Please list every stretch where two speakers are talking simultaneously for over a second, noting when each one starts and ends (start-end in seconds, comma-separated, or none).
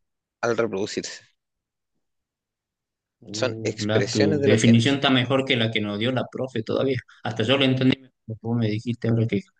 3.3-5.0